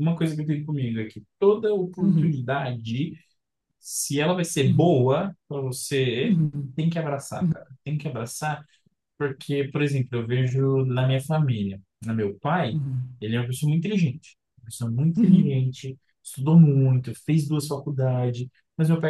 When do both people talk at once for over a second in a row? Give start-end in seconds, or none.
none